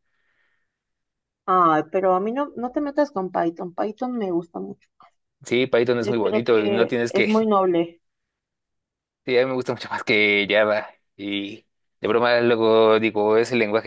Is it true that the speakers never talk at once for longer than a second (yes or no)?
no